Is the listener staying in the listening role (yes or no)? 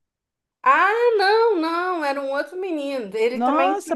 no